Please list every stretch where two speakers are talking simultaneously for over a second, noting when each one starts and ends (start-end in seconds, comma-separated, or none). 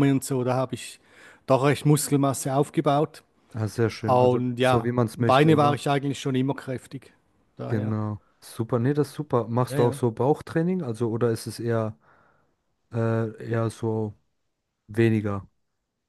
4.1-5.8